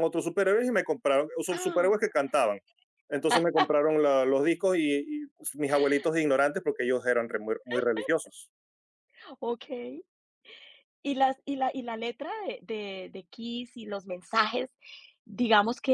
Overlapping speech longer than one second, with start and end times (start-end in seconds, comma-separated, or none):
none